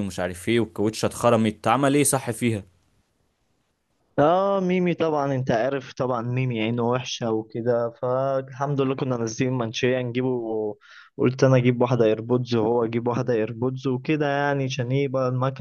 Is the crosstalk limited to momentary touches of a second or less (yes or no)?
yes